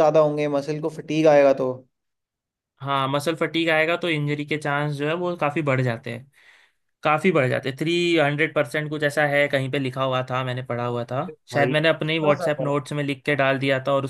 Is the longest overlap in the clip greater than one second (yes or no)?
yes